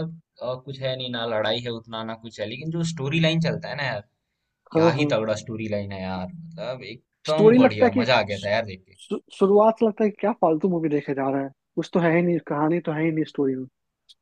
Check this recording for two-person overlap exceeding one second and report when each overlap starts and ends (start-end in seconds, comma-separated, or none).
7.3-9.0